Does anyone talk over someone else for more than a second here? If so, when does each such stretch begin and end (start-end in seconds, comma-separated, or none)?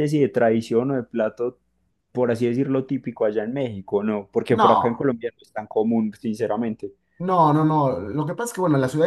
none